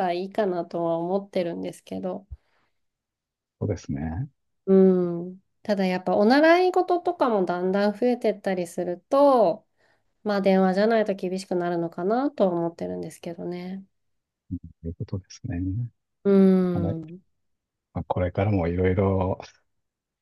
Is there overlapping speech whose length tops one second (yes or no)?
no